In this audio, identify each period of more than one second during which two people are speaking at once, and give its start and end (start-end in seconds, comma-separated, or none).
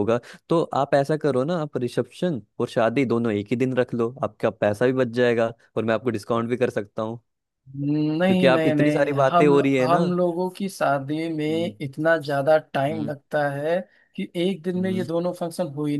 8.3-10.0